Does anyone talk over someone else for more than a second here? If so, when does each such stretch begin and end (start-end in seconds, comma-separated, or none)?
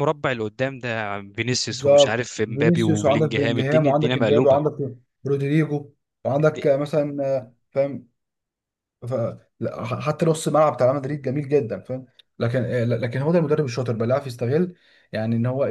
1.7-4.6